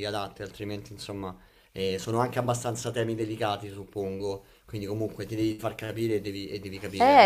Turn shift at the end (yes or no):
yes